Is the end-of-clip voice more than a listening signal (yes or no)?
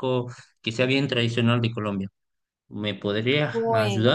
yes